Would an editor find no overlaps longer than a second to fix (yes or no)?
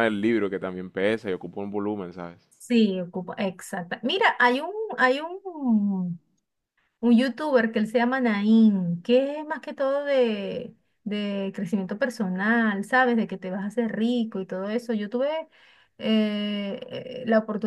yes